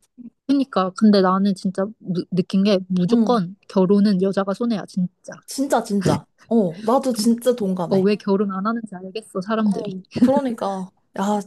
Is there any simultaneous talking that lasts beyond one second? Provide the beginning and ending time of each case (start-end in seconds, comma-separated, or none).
none